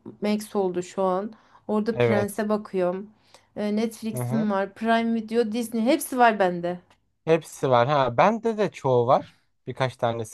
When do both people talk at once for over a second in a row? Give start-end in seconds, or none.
none